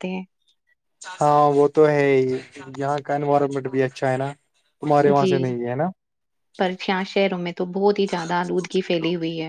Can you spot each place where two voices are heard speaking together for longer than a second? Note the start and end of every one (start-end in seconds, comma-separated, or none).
none